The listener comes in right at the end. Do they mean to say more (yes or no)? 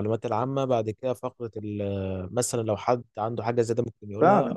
yes